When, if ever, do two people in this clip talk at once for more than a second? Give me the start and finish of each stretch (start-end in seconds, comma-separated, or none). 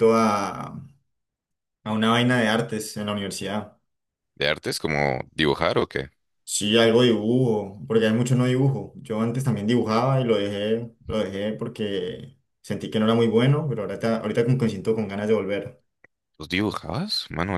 none